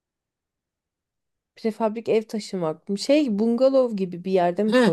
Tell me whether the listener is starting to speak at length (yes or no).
yes